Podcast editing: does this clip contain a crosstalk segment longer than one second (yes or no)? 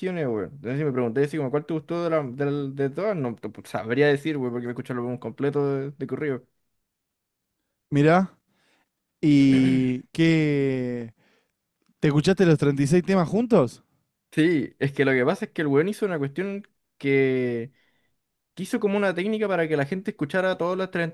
no